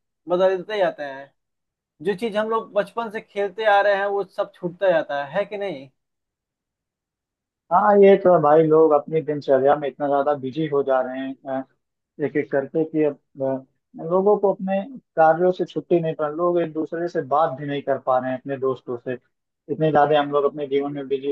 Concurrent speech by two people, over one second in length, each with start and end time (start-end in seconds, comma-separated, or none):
none